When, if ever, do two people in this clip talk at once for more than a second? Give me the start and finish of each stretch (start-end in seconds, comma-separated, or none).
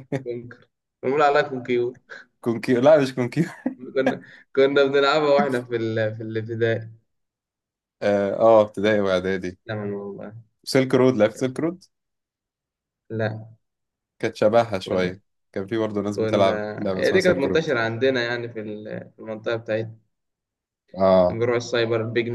16.1-17.7